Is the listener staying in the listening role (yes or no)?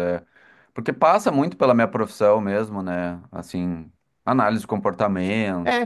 no